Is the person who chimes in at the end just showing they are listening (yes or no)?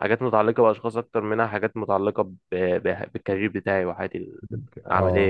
no